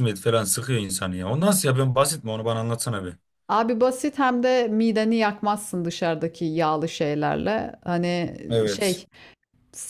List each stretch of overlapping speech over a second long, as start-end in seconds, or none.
none